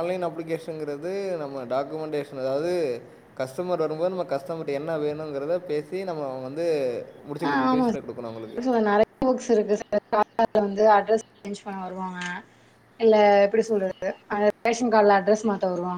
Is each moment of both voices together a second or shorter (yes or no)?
yes